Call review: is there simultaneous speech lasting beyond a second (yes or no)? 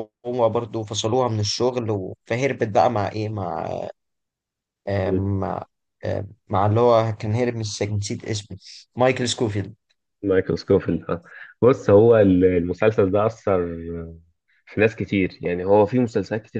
no